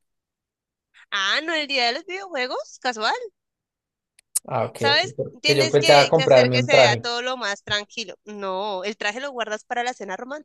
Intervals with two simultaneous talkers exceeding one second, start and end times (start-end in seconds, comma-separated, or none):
4.8-7.0